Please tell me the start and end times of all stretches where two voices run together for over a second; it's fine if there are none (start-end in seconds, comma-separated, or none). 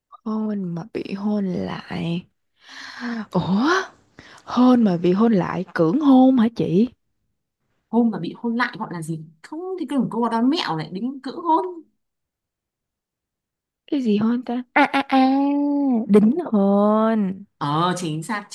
none